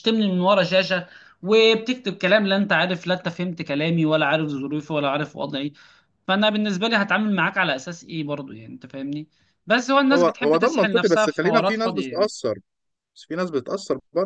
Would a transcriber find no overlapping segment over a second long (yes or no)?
no